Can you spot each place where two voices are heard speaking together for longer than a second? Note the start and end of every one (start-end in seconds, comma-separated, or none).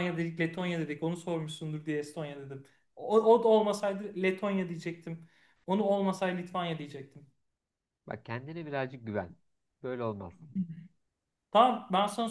none